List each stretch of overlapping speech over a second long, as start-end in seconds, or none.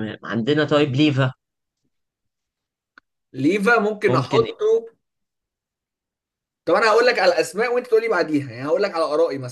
none